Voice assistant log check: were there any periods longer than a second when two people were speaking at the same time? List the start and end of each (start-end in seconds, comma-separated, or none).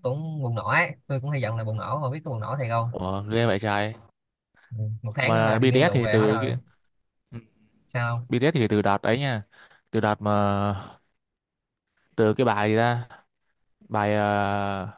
5.2-6.5